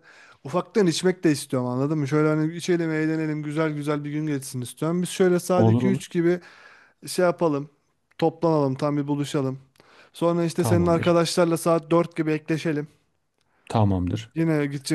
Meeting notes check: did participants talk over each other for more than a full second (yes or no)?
no